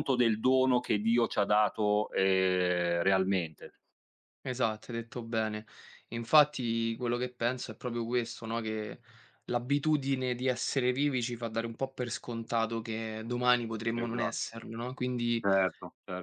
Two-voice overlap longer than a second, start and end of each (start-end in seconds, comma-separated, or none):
none